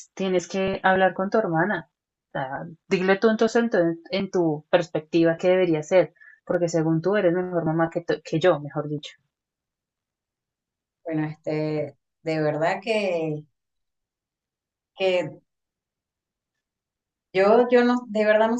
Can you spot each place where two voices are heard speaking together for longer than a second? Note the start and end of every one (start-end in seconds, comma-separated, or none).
none